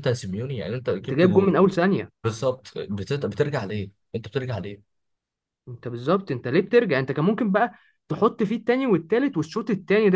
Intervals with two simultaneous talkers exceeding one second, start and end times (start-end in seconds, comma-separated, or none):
none